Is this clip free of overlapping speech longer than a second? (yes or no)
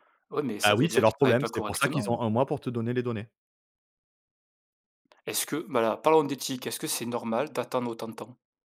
no